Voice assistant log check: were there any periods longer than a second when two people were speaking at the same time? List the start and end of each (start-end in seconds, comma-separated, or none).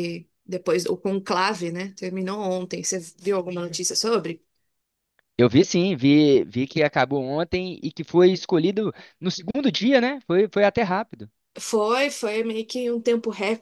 none